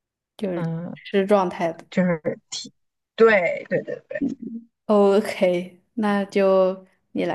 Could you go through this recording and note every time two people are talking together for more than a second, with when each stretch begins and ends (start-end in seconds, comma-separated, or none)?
none